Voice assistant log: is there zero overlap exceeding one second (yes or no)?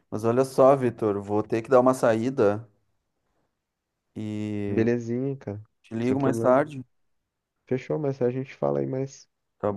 yes